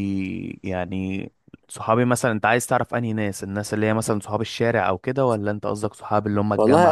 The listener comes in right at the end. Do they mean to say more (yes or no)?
yes